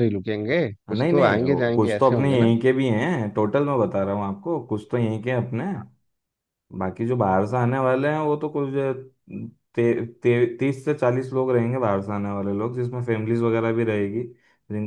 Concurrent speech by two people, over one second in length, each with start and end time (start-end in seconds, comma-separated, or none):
0.9-2.5